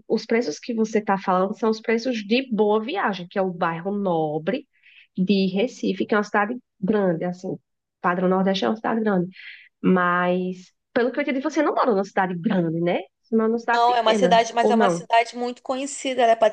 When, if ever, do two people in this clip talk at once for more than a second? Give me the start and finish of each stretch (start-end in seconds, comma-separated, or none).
13.7-15.1